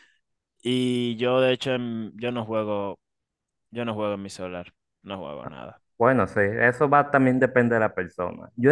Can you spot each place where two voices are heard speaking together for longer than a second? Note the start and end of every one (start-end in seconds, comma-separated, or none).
none